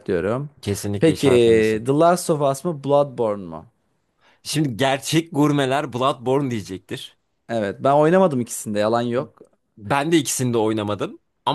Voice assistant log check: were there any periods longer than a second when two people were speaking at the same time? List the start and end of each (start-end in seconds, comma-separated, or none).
none